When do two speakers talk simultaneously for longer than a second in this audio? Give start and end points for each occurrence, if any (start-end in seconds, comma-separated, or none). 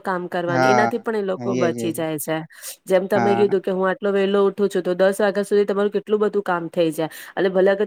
0.5-2.0